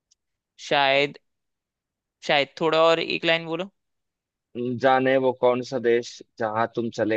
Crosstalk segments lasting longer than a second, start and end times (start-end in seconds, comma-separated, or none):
none